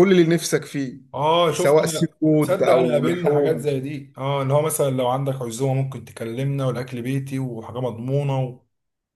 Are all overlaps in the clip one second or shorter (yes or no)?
no